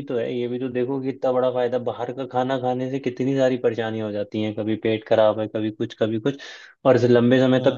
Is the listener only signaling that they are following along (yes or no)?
yes